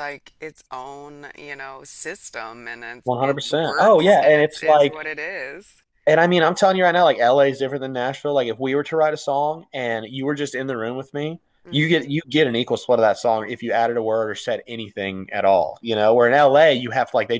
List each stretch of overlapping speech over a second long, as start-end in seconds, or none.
3.0-5.0